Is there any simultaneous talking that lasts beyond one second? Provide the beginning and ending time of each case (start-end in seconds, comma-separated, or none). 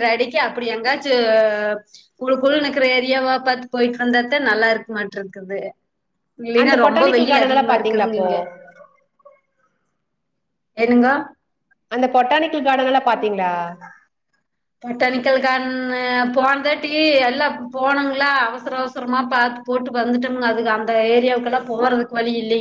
6.6-8.3